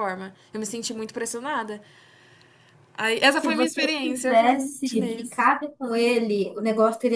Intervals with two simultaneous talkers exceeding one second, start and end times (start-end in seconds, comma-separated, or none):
3.4-5.4